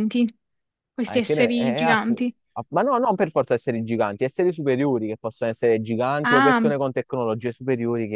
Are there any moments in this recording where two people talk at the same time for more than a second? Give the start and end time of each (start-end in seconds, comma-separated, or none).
1.0-2.3